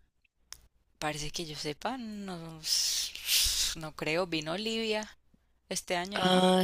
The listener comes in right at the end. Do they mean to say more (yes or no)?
yes